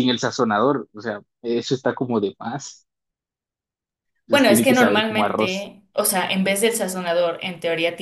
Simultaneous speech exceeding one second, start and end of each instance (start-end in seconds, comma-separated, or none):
4.3-5.7